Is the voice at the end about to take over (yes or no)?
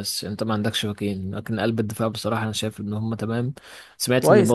no